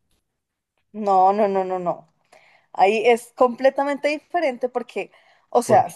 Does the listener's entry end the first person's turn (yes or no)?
no